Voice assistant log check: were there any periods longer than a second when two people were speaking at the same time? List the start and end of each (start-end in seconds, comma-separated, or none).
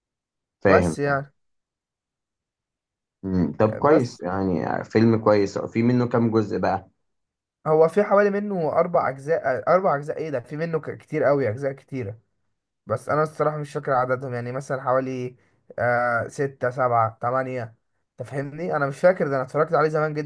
none